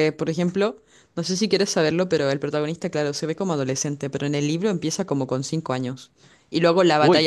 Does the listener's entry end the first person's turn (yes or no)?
no